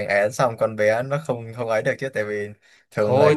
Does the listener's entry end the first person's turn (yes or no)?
yes